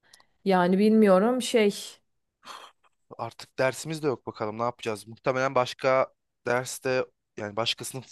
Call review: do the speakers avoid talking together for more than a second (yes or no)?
yes